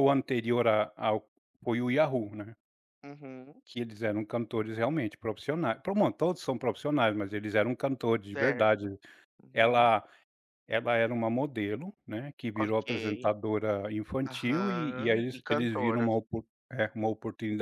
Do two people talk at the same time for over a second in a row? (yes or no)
yes